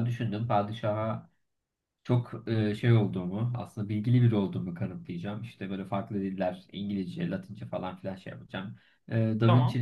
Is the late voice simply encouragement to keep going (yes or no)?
yes